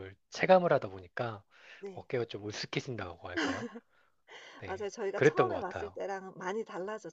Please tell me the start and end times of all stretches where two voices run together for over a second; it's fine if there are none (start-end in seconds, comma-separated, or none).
4.7-6.0